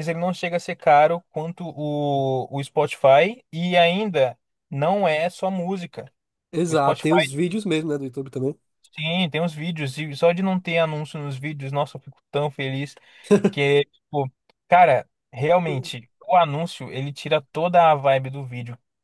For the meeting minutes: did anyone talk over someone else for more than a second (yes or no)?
no